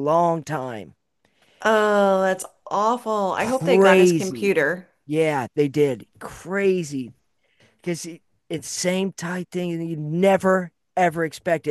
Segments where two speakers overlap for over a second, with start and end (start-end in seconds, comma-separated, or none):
3.4-4.5